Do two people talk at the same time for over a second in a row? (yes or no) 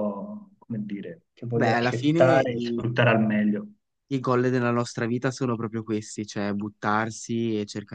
yes